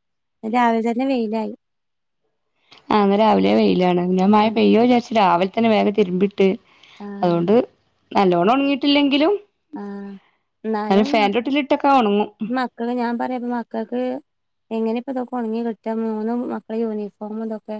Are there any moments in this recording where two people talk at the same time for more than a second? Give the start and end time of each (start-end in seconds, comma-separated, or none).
none